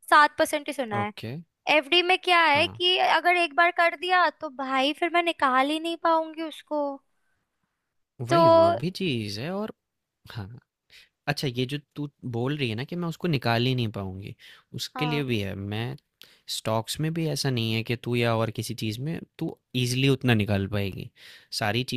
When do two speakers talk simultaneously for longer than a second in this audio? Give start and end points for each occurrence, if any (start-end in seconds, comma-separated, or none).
none